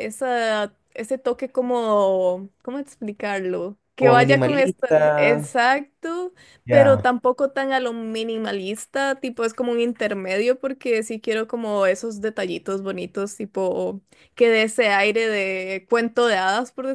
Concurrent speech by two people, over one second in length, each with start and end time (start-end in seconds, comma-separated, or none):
4.0-5.5